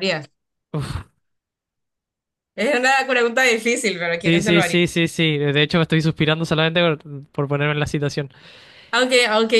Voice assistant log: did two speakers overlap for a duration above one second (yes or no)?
no